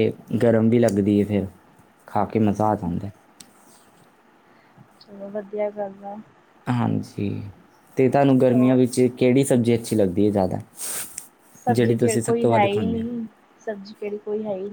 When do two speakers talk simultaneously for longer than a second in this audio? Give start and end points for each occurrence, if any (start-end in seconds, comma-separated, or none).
11.7-13.1